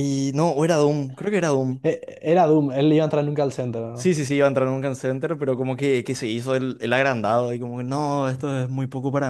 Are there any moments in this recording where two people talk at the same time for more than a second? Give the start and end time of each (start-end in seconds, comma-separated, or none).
none